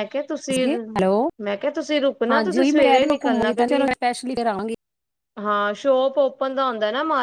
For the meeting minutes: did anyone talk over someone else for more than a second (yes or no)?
yes